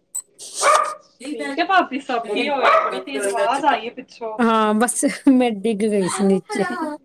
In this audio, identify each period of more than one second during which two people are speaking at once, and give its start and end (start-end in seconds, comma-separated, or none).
none